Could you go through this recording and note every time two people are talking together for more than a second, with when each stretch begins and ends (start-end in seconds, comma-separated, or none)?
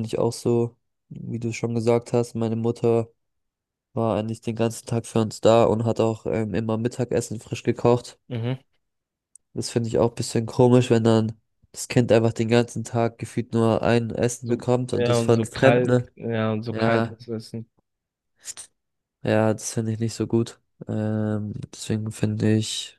14.4-16.1